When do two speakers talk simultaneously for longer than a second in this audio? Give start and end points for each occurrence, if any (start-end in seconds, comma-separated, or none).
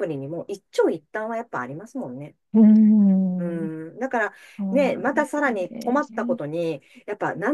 4.7-6.4